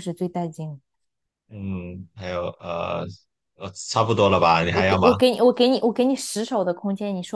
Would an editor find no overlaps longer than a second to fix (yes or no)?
yes